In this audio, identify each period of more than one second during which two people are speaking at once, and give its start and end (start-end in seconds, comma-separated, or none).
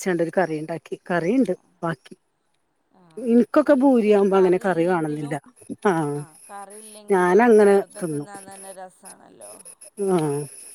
3.3-5.3